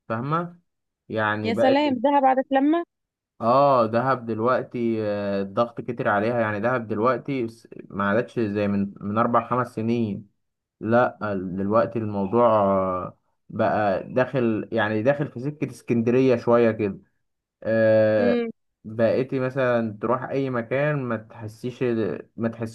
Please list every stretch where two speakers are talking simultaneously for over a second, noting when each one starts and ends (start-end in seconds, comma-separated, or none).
none